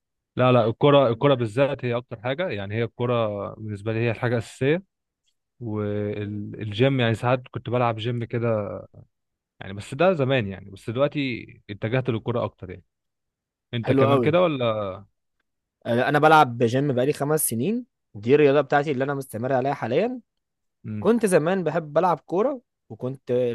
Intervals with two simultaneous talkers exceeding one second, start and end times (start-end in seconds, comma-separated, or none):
none